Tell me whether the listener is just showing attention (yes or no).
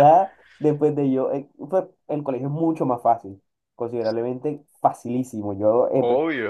no